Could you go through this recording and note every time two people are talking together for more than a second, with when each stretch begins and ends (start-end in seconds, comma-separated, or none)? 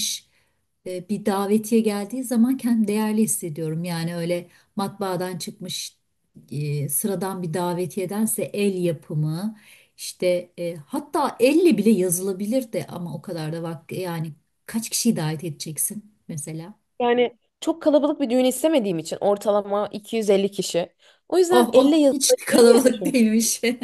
21.5-23.2